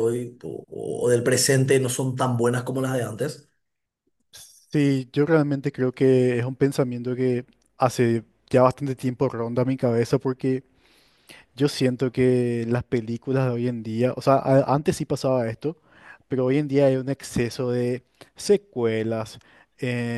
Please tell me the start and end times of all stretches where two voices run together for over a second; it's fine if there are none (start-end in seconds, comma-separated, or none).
none